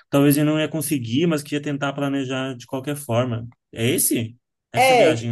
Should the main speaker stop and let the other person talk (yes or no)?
yes